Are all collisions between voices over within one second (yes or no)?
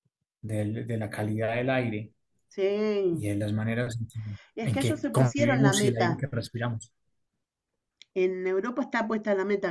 no